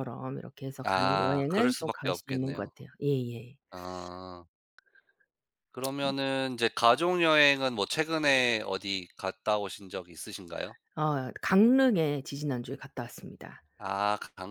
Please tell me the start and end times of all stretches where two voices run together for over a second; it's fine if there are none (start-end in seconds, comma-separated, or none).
0.8-2.7